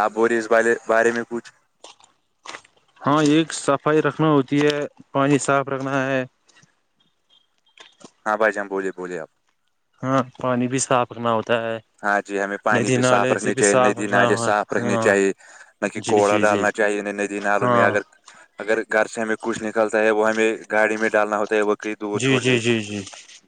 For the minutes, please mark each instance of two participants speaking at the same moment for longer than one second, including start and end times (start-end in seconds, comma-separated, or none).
12.8-15.1